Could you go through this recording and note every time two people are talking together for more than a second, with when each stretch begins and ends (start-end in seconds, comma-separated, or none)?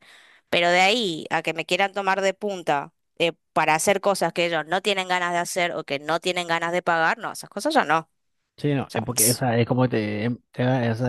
none